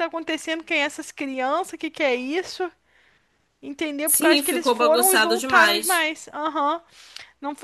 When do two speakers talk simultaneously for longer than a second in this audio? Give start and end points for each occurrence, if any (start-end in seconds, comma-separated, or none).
4.0-6.0